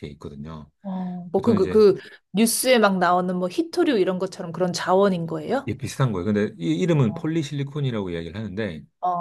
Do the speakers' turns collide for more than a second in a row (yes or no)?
no